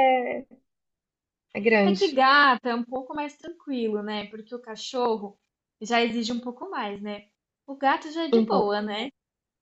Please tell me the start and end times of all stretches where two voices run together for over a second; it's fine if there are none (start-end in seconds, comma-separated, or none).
none